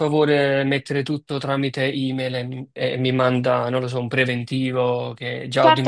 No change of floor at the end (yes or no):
no